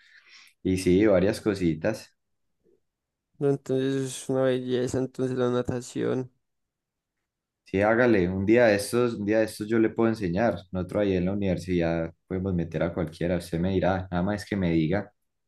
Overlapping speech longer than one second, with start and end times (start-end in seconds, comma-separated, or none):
none